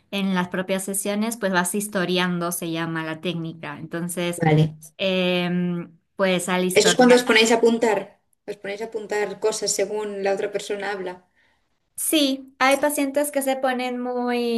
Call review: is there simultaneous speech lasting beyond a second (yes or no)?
no